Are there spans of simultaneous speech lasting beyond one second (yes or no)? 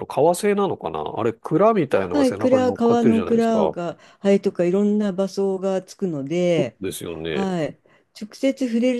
yes